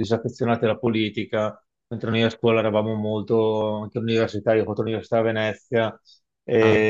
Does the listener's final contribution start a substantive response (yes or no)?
no